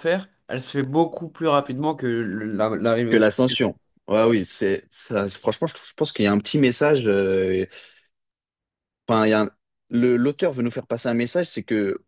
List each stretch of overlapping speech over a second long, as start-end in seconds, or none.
none